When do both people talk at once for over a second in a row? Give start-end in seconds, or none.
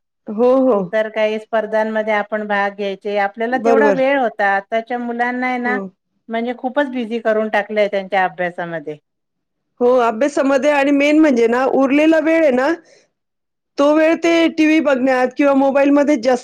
none